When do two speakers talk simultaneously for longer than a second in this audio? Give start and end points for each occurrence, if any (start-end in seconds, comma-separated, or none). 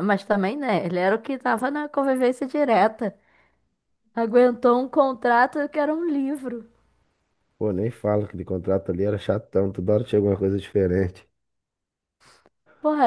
none